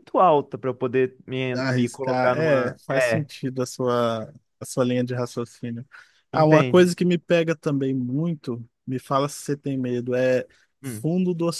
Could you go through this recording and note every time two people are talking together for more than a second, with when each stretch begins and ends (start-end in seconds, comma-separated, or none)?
1.5-3.3